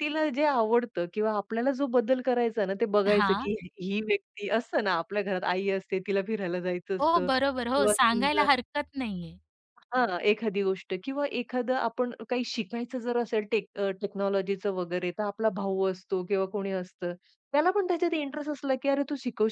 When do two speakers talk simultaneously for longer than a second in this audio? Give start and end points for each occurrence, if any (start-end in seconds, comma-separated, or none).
7.0-8.5